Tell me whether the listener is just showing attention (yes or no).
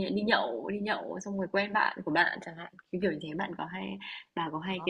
no